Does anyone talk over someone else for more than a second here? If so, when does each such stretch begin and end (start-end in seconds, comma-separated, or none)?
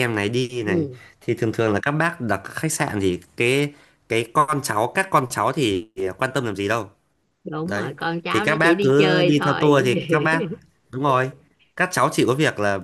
7.6-9.8